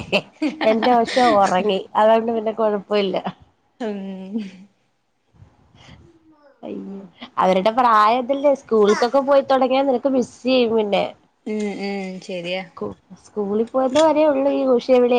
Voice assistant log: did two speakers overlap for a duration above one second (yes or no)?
no